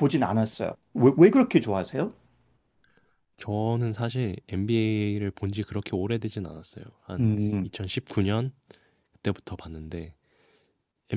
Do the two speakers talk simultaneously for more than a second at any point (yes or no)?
no